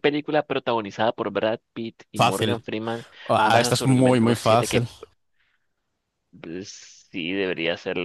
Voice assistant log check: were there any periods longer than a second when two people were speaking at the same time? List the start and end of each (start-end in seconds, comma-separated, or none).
3.4-4.9